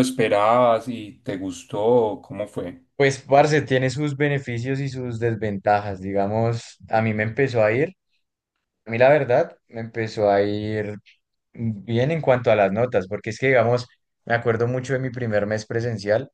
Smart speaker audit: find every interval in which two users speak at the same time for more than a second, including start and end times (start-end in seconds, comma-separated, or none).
none